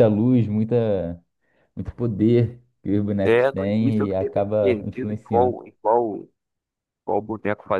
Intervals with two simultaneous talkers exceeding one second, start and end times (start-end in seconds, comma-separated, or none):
3.2-5.6